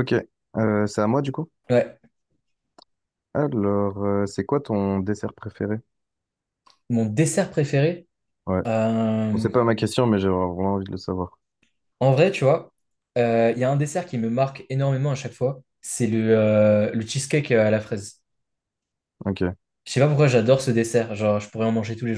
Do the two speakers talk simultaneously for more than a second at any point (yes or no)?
no